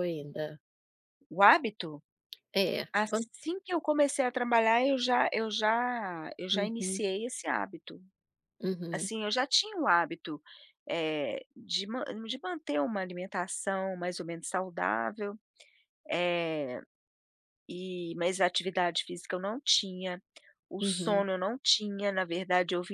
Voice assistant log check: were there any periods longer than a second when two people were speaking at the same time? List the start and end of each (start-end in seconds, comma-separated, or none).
none